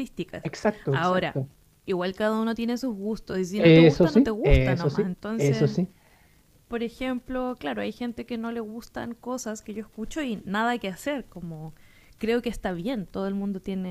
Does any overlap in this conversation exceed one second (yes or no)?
yes